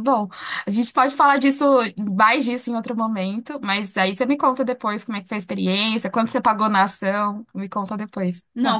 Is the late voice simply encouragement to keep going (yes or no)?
no